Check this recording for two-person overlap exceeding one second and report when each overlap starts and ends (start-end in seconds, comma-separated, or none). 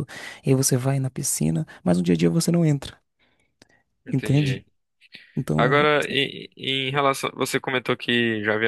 none